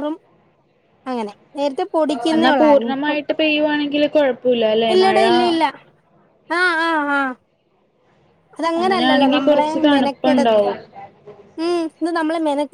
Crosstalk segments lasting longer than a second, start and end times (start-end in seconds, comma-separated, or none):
8.8-10.6